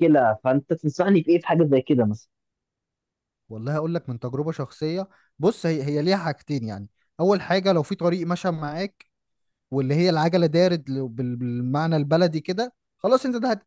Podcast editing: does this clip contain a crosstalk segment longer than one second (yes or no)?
no